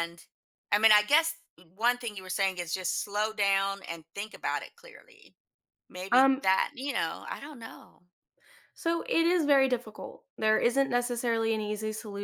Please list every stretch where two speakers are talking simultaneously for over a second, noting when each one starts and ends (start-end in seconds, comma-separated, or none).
none